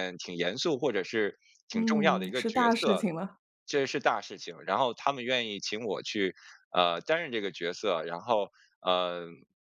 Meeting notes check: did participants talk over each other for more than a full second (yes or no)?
yes